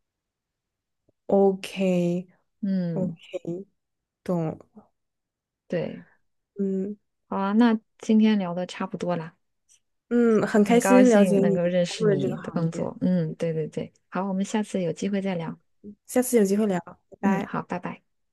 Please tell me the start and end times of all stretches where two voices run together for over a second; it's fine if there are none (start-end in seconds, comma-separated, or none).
10.6-12.9